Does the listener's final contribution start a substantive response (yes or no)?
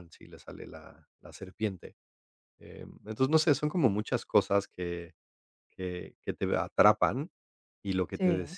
no